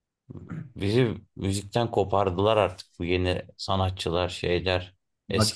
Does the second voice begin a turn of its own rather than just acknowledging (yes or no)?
yes